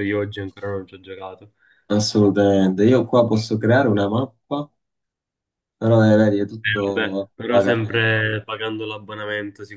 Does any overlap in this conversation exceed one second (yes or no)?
yes